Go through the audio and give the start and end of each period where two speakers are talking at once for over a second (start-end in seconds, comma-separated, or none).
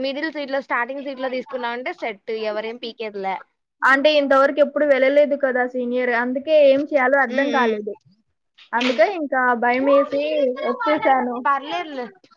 none